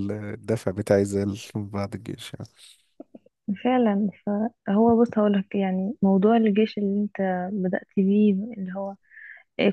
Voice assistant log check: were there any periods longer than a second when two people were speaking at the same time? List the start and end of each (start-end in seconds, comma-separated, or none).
none